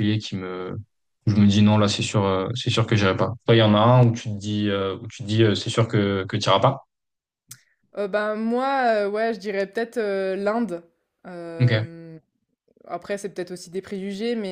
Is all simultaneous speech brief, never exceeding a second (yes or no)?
yes